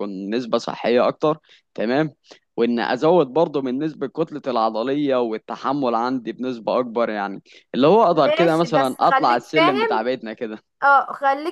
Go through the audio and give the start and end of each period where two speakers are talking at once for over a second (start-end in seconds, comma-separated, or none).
8.1-10.0